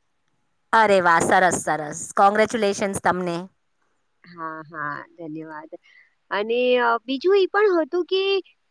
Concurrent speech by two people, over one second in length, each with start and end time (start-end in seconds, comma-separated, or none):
none